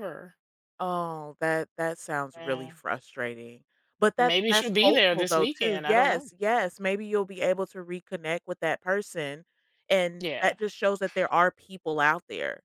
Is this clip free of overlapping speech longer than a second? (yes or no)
no